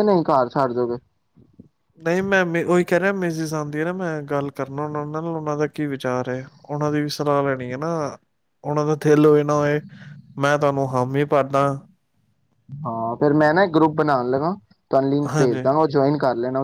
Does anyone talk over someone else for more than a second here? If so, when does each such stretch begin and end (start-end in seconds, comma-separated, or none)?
none